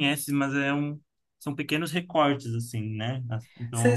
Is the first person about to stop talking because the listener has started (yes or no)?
yes